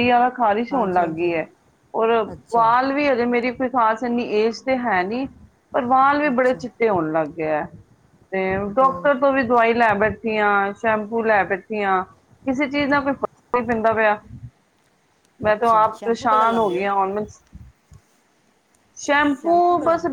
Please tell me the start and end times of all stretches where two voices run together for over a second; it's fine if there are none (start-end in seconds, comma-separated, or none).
15.5-16.8